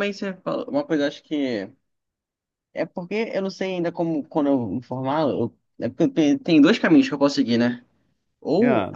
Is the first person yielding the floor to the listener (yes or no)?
no